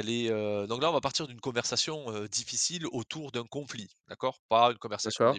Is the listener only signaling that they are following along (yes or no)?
yes